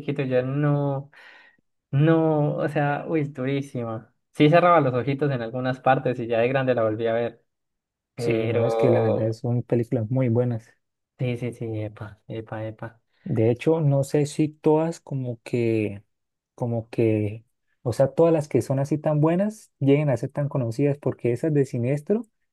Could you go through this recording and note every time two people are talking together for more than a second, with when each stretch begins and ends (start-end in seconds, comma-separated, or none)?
8.2-9.4